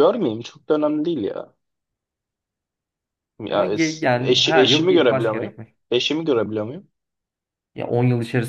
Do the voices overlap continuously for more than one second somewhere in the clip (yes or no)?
yes